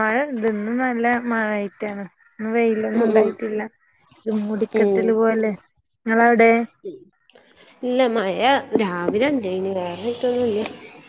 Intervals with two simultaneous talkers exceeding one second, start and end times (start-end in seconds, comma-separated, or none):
none